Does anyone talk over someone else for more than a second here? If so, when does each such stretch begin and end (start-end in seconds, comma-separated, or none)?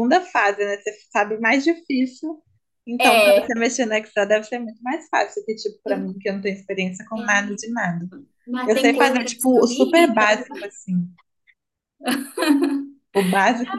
8.7-10.3